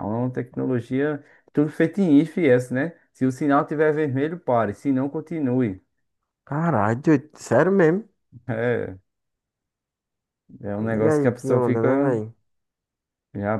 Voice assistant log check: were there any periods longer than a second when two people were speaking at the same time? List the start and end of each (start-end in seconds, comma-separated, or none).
10.9-12.1